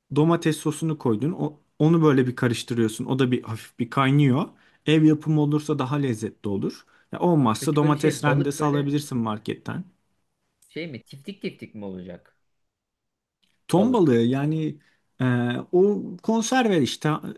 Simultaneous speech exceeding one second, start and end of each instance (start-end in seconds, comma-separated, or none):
7.6-8.9